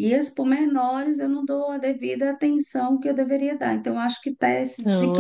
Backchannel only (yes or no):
no